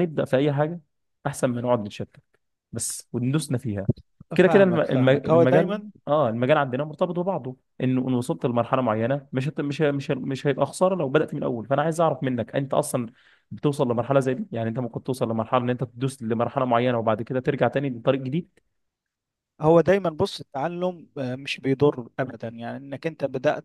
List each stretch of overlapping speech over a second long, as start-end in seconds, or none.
4.5-5.9